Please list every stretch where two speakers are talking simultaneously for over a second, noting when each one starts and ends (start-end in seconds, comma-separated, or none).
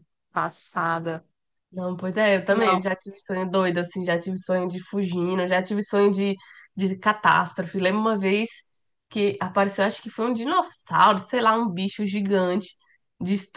none